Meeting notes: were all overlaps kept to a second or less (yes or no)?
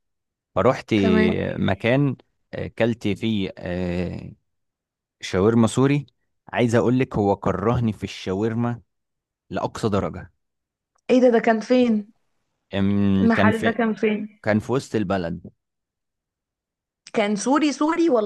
yes